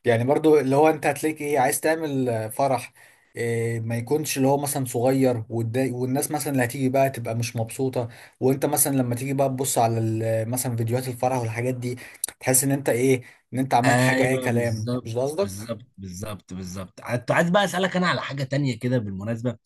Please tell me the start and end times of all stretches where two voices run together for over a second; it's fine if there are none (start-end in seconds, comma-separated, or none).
13.8-15.5